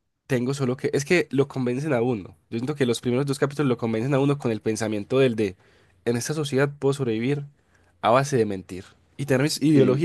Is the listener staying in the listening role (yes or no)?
yes